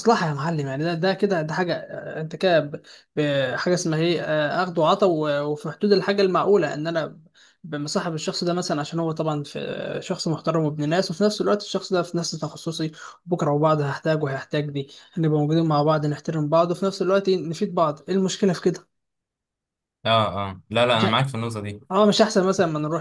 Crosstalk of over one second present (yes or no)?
no